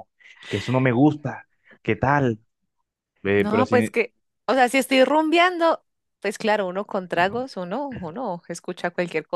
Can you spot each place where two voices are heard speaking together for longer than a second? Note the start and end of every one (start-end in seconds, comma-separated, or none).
none